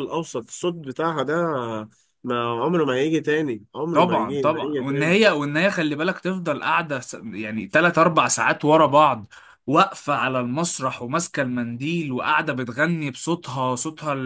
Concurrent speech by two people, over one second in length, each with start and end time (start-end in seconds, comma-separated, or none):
3.9-5.2